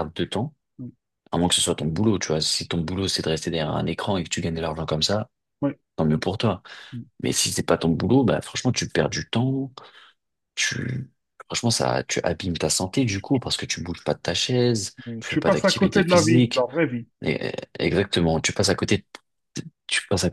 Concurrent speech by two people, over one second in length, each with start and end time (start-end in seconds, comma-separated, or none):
15.1-16.7